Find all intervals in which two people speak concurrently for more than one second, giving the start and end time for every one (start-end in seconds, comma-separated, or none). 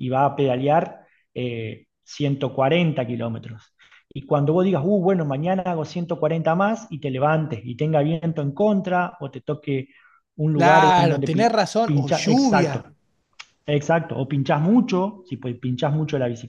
10.6-12.8